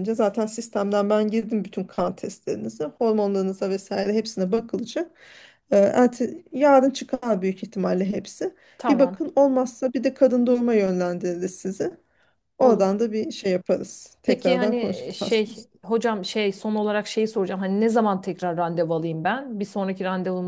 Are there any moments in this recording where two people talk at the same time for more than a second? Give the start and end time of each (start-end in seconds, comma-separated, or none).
14.3-15.9